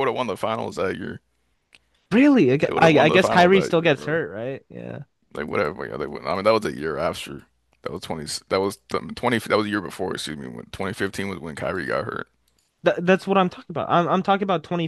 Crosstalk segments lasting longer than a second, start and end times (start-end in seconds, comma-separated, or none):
2.6-4.2